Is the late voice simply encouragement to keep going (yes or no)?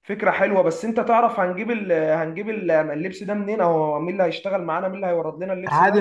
no